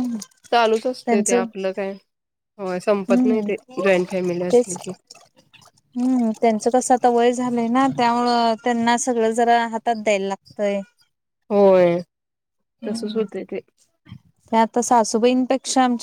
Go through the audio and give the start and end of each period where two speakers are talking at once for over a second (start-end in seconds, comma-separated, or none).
none